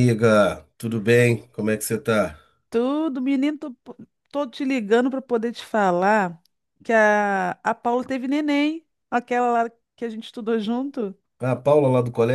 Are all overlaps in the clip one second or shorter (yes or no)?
yes